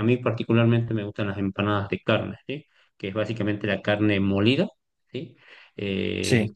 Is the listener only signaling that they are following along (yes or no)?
yes